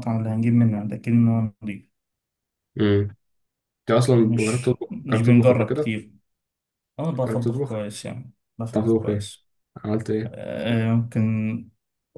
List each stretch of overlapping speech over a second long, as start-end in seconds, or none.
4.2-6.0